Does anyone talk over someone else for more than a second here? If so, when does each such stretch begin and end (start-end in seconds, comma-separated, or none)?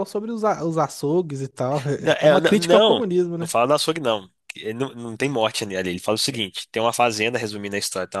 2.0-3.5